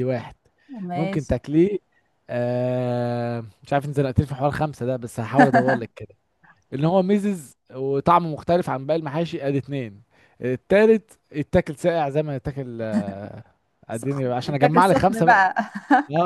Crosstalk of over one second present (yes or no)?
yes